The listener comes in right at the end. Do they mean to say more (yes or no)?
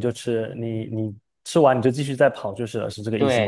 yes